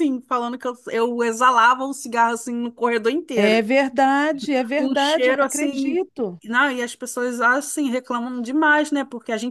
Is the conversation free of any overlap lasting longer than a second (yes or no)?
no